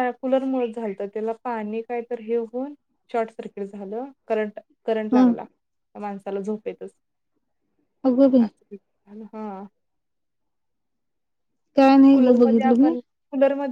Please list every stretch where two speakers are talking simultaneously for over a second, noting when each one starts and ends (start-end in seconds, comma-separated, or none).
none